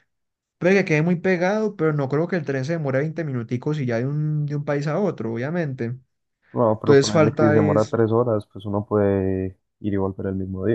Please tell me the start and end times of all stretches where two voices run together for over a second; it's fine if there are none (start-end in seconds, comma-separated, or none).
6.8-8.0